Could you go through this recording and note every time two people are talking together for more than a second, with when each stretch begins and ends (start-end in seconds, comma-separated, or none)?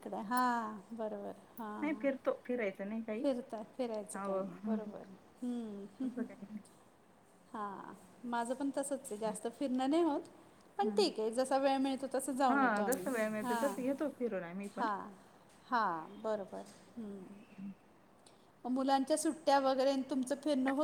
none